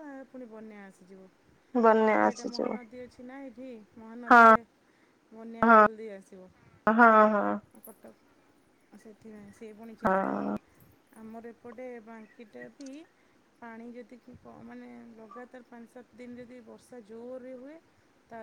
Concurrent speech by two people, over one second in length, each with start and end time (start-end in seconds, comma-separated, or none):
none